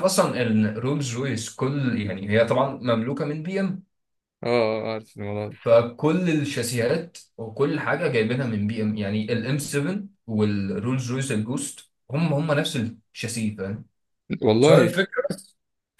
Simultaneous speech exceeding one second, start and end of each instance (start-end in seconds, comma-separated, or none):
none